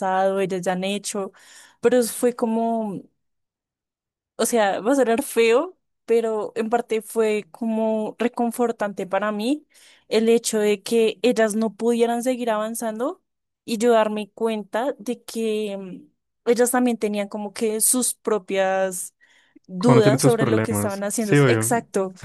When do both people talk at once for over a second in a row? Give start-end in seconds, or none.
19.8-21.7